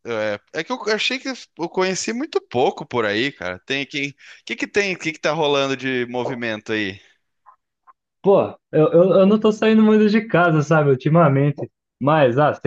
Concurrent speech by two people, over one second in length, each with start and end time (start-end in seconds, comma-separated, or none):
none